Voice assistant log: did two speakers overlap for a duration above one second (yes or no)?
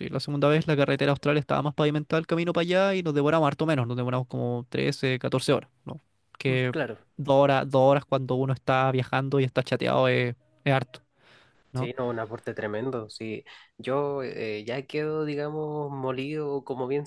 no